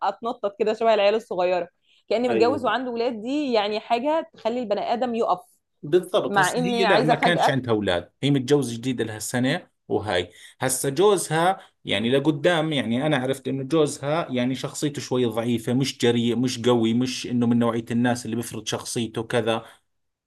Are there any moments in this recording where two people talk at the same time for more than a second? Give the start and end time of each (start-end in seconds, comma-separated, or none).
6.3-7.6